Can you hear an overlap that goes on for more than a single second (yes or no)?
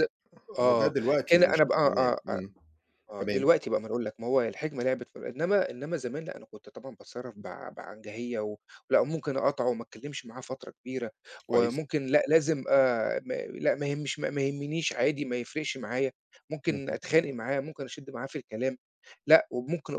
yes